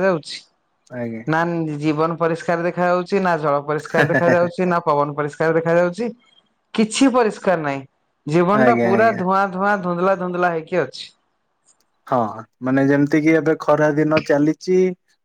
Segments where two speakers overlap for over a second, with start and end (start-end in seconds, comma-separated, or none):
none